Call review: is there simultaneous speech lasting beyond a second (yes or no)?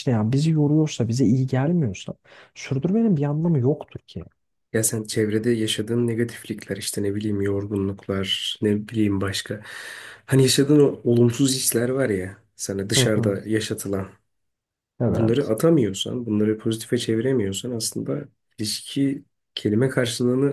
no